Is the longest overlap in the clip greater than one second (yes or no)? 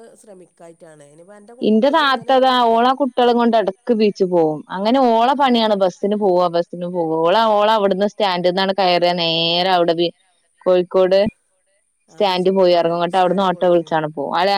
yes